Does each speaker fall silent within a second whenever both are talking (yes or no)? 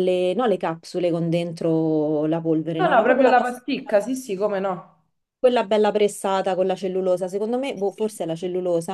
no